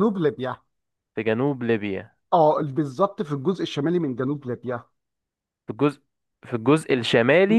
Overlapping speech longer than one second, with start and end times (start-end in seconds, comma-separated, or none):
none